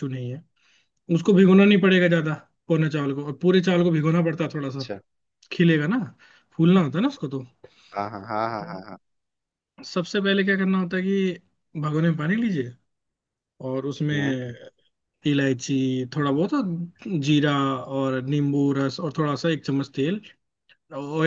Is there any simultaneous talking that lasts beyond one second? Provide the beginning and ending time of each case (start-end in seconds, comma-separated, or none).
none